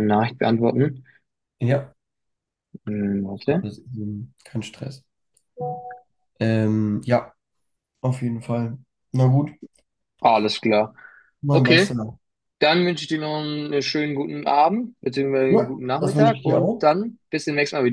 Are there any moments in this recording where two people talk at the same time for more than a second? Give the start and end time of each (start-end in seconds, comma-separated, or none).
15.5-16.9